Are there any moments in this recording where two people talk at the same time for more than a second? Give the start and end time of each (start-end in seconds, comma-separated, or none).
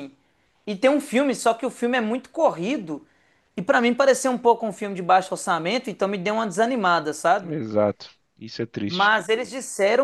none